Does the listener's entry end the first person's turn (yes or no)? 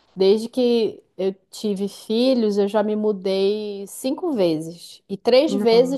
no